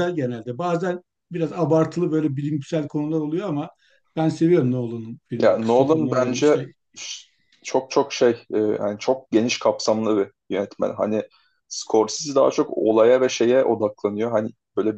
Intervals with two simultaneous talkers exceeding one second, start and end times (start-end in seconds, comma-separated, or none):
5.3-6.7